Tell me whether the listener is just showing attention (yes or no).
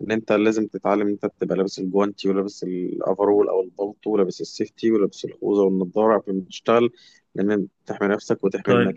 no